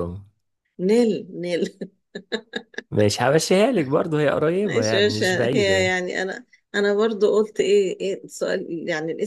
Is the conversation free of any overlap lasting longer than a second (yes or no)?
no